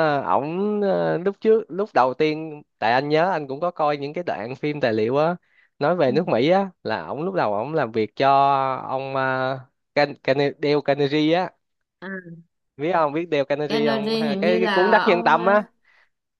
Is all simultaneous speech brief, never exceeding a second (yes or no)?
no